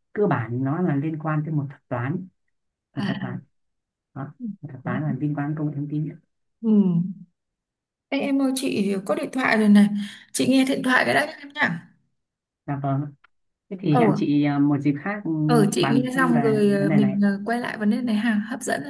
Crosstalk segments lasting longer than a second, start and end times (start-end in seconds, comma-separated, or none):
15.8-17.2